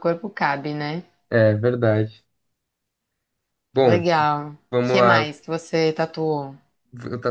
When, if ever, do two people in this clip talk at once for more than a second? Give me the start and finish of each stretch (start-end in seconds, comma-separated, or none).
none